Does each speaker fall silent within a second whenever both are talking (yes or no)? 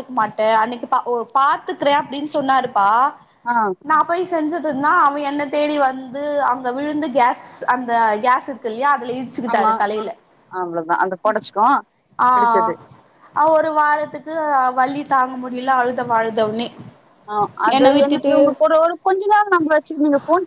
yes